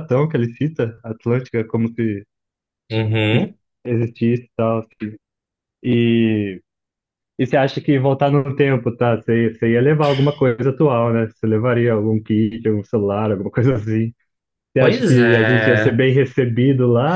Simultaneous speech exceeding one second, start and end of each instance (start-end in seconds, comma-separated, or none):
14.8-16.1